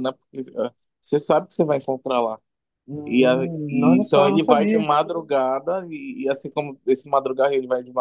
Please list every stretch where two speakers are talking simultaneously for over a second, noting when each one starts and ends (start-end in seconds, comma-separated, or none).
3.0-4.8